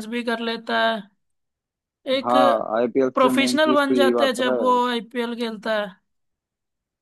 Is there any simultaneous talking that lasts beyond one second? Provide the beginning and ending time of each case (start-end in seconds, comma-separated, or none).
3.1-4.8